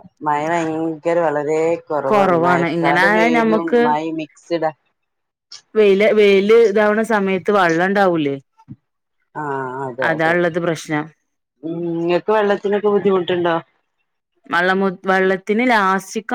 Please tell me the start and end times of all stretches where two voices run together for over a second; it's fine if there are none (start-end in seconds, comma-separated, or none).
2.1-3.8